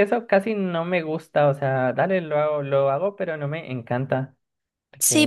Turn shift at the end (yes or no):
yes